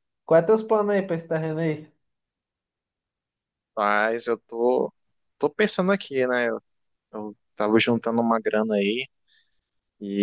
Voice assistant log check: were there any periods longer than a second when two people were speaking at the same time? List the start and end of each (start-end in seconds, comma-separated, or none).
none